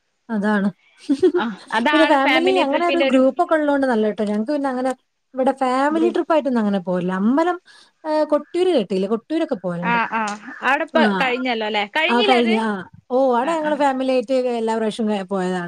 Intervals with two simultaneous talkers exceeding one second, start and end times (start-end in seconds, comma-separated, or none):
none